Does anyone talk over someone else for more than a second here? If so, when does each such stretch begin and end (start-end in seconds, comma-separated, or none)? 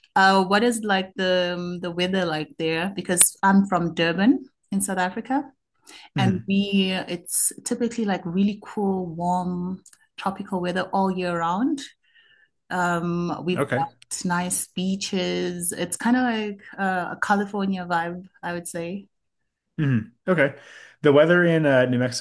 none